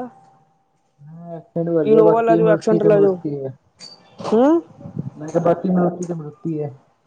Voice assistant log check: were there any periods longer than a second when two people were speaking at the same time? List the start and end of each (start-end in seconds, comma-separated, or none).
1.9-3.1